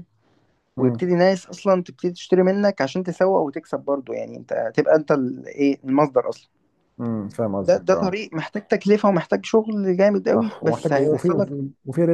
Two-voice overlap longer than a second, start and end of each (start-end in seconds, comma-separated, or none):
10.3-11.5